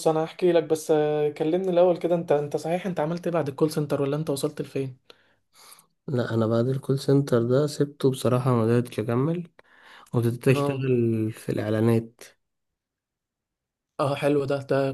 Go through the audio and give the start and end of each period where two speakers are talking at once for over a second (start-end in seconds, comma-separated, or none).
none